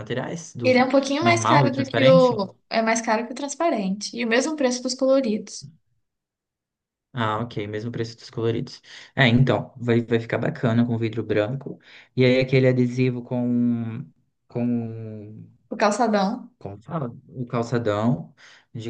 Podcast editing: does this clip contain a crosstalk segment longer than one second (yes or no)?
yes